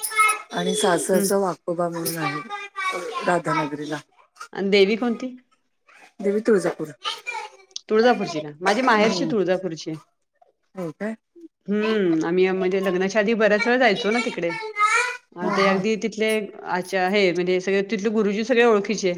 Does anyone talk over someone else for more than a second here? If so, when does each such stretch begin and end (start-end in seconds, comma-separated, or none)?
none